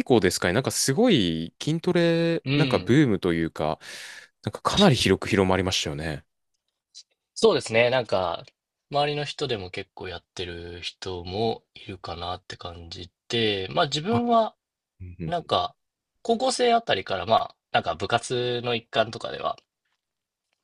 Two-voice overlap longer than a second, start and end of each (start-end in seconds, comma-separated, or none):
none